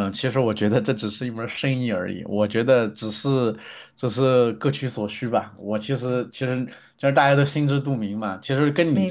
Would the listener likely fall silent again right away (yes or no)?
yes